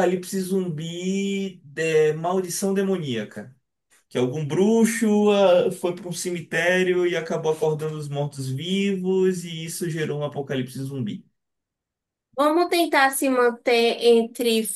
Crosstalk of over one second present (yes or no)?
no